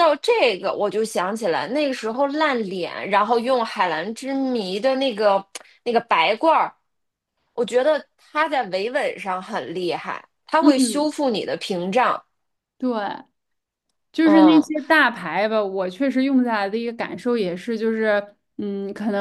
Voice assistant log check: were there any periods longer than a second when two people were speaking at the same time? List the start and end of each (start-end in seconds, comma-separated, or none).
none